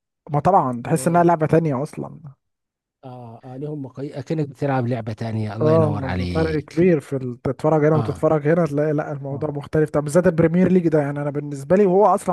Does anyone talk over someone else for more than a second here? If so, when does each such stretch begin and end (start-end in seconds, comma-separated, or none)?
5.6-6.8